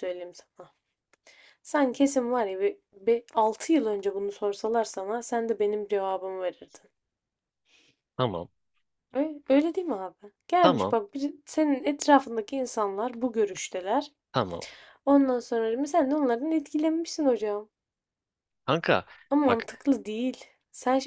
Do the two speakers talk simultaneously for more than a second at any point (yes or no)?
no